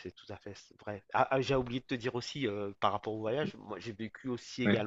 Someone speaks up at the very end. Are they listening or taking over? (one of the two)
listening